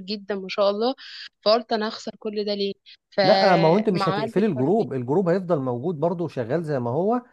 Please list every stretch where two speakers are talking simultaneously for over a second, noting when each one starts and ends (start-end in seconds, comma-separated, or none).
3.2-4.9